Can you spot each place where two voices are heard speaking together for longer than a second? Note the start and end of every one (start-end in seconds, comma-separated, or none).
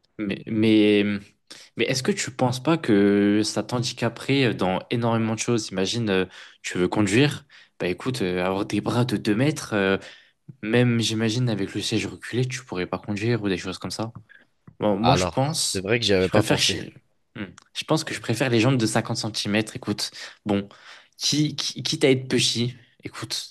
15.0-16.8